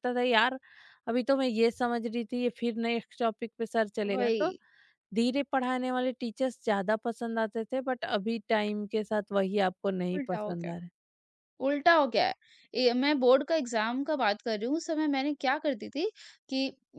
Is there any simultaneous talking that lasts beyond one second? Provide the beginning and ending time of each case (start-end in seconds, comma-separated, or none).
none